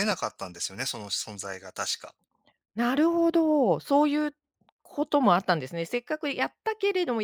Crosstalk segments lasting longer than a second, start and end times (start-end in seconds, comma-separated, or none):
none